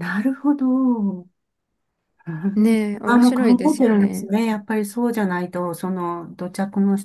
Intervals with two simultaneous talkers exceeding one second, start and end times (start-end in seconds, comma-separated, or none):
3.0-4.3